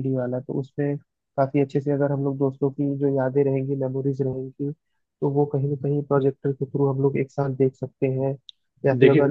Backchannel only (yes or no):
yes